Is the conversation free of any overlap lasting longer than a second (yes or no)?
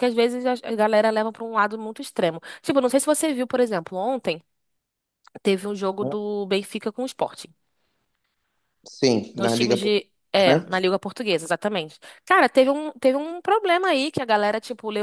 no